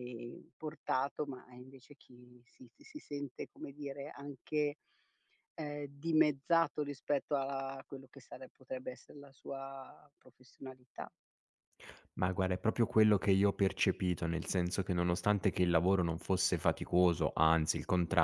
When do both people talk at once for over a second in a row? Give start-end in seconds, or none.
none